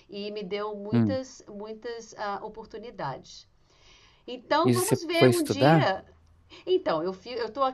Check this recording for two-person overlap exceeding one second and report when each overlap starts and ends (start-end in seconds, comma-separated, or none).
4.6-5.9